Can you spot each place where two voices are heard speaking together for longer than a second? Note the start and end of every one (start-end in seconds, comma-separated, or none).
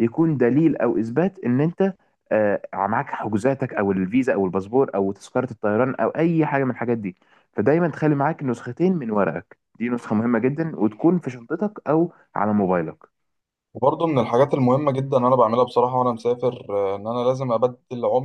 none